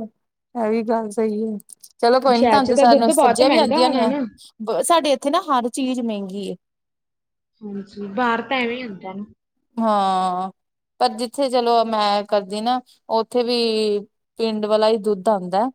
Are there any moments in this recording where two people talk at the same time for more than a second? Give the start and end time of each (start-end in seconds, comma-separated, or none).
2.3-4.1